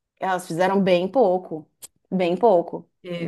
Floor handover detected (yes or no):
yes